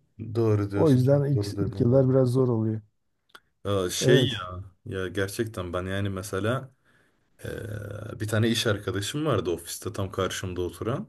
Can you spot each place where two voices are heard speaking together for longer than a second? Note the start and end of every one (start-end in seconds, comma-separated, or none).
0.7-2.0